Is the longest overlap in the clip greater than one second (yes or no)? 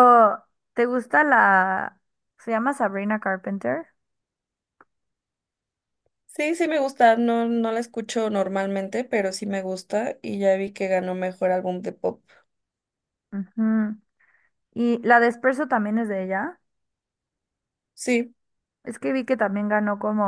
no